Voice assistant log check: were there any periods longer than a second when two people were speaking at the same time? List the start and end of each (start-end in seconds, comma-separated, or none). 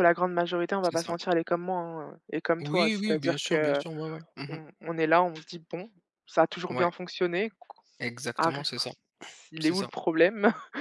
2.6-3.8